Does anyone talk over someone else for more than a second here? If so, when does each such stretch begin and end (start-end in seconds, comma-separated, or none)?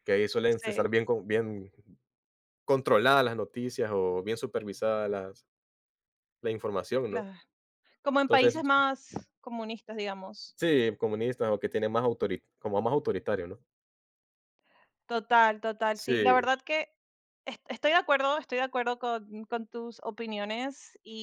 none